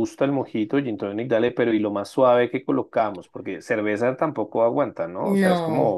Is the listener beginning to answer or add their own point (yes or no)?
no